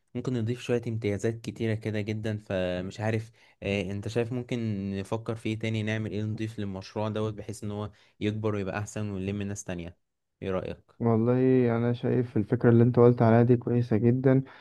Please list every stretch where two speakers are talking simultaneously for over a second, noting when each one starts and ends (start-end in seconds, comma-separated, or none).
none